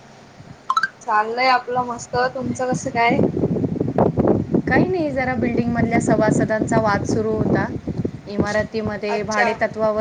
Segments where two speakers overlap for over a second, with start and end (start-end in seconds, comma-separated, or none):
none